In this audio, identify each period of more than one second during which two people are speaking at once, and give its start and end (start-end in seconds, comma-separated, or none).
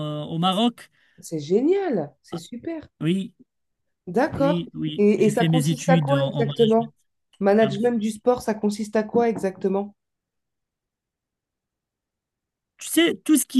4.4-6.9